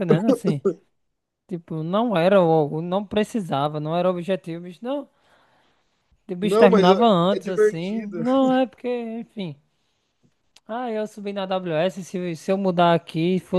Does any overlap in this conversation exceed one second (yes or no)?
yes